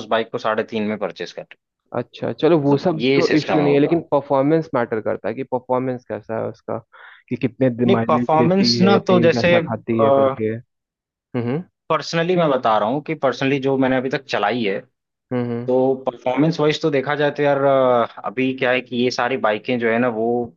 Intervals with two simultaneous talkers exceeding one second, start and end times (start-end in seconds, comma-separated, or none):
2.5-4.0, 7.8-9.5